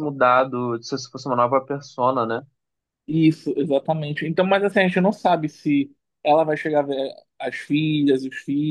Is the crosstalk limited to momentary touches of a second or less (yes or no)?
yes